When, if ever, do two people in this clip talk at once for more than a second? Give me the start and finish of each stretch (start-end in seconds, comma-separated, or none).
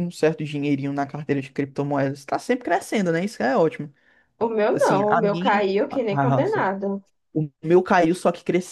4.7-6.4